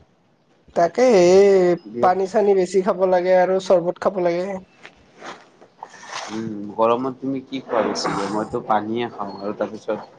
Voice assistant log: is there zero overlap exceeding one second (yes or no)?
yes